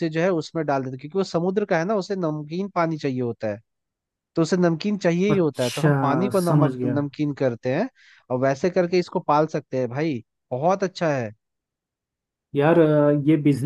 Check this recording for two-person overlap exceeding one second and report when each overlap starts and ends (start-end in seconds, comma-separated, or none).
5.3-7.1